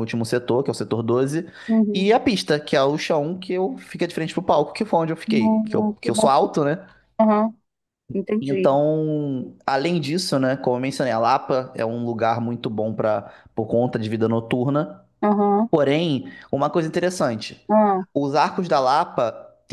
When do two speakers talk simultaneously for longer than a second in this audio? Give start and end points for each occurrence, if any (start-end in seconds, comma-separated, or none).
5.3-6.5